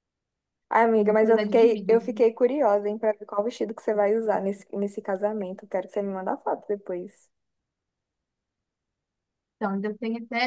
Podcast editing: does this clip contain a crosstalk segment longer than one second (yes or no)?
yes